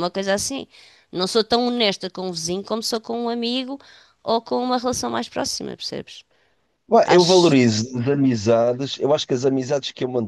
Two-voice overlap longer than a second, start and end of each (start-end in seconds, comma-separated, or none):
none